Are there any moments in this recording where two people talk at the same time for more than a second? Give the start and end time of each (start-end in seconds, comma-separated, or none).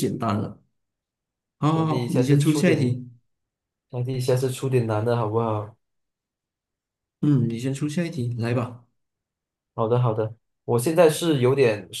1.7-3.0